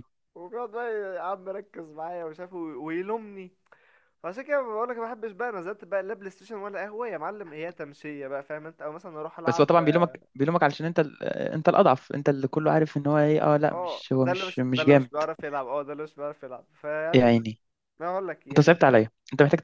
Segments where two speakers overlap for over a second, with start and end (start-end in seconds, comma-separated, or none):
13.7-15.1